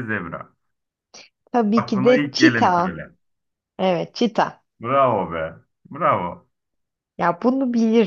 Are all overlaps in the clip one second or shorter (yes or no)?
no